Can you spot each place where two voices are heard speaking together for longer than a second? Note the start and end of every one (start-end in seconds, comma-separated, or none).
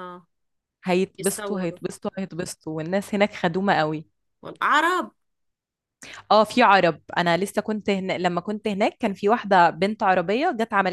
none